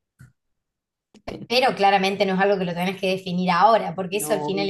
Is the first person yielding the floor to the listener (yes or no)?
no